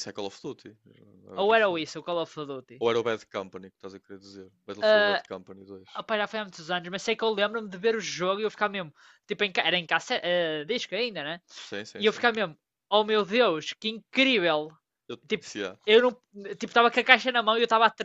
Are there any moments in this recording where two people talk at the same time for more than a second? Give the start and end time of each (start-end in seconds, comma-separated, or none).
none